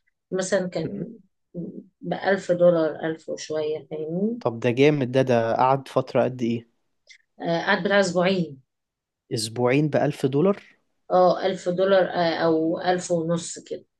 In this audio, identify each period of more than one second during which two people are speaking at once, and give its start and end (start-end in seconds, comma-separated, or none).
none